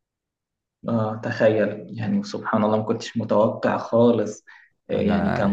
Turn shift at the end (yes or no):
no